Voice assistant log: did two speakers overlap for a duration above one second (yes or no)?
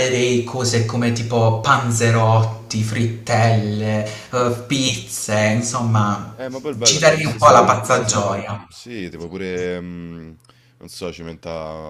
yes